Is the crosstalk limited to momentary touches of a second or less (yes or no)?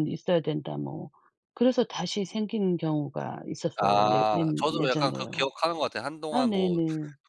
no